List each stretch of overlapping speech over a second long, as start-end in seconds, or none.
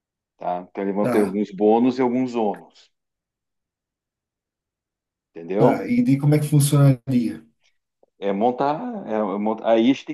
none